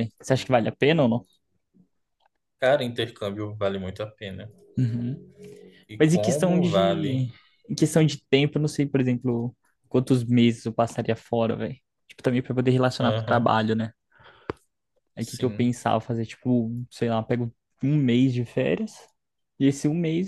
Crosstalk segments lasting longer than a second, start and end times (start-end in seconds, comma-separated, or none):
6.0-7.2